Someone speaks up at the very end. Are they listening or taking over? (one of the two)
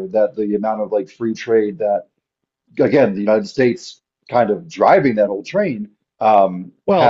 taking over